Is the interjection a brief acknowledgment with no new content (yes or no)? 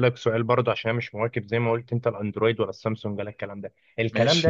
yes